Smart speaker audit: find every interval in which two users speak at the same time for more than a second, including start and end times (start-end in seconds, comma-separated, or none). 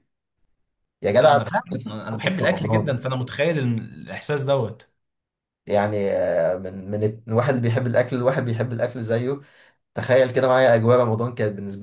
1.2-3.0